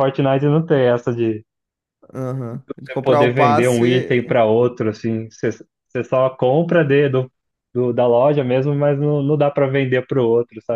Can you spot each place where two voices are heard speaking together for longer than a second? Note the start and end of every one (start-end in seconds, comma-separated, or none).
2.7-4.3